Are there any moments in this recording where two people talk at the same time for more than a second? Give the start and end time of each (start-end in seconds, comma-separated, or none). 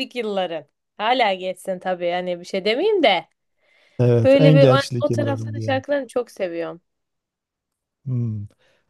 4.2-5.8